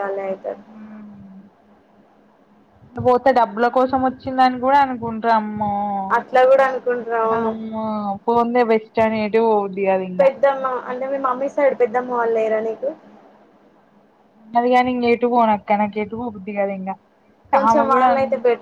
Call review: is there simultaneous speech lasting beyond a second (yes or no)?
no